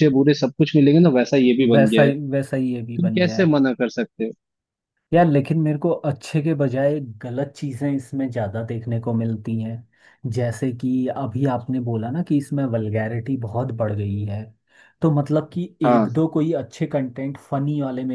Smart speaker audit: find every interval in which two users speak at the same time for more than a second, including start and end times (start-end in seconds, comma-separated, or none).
none